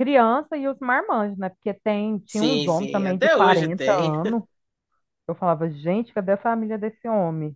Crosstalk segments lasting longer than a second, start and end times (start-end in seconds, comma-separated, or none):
2.2-4.1